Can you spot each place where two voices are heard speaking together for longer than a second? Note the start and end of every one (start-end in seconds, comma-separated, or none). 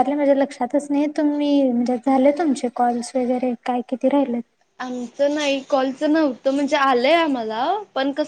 none